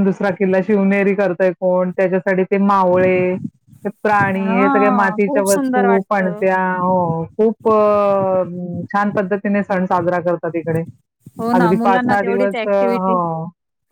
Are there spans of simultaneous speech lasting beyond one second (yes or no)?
yes